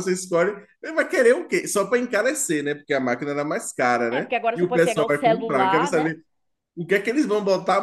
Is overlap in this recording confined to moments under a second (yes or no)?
no